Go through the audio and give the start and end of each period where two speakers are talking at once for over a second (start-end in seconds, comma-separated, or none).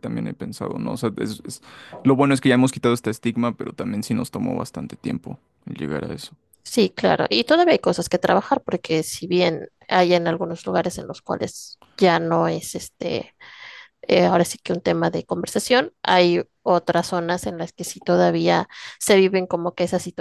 none